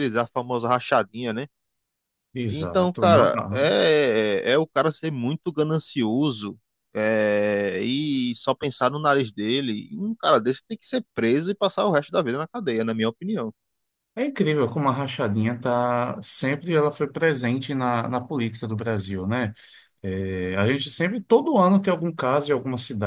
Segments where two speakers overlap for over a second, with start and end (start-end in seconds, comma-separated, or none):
2.5-3.8